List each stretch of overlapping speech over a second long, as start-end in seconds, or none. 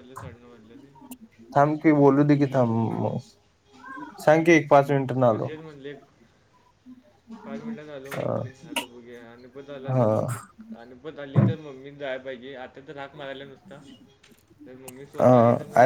none